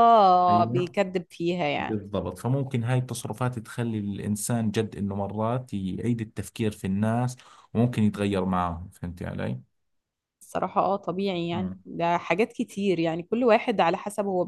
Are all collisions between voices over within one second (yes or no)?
yes